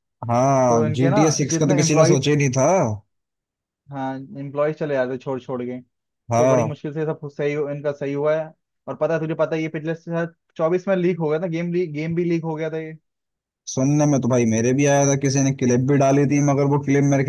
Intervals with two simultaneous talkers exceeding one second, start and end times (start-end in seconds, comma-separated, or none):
0.7-2.3